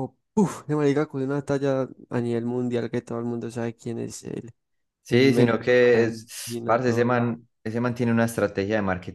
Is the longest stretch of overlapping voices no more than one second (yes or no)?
no